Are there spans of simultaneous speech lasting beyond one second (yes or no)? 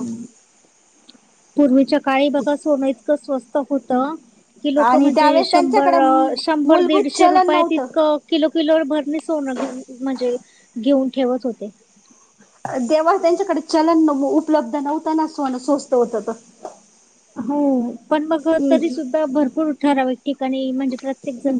yes